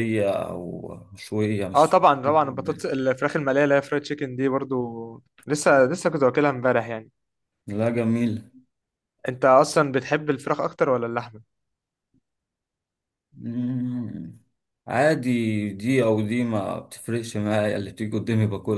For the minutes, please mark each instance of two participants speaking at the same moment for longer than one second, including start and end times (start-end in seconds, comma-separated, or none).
none